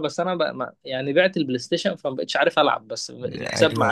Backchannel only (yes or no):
no